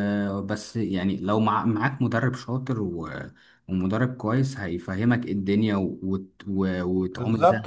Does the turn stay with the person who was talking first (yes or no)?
no